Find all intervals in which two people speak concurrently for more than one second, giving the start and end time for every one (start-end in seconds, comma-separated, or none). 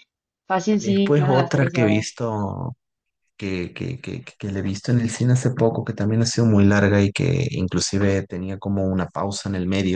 0.8-2.2